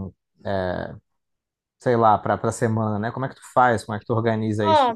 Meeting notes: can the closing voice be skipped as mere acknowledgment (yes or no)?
yes